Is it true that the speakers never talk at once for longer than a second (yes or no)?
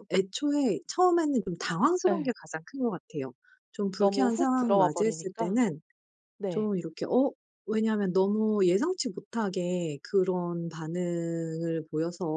no